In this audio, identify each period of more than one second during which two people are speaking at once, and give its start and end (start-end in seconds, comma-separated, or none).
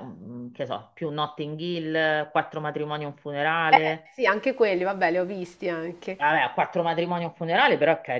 none